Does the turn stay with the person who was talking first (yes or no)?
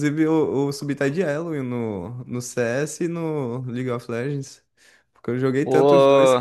no